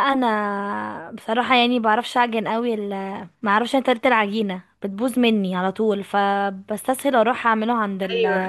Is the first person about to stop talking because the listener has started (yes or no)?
no